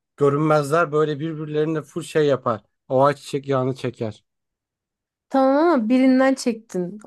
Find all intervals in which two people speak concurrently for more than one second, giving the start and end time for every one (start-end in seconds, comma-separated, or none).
none